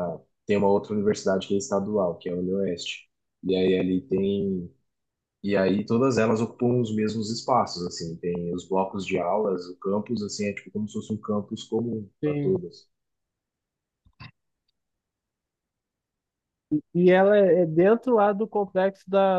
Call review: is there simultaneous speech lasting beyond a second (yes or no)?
no